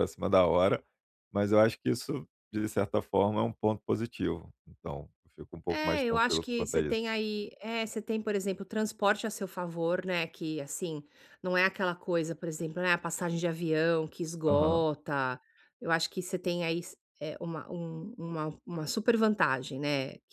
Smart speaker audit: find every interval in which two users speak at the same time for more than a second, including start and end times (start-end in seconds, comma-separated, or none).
5.7-7.0